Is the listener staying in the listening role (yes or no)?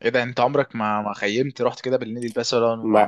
yes